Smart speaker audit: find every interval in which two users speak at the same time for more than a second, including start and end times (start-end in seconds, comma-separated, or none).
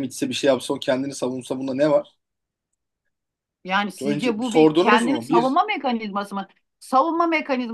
4.0-5.6